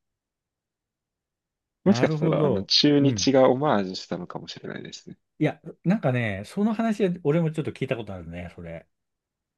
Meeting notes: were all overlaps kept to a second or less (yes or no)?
no